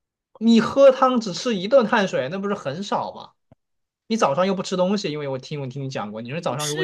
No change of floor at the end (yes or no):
no